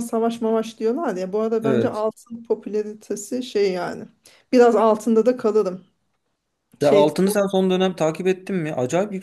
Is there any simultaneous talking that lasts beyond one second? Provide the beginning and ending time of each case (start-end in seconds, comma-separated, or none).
none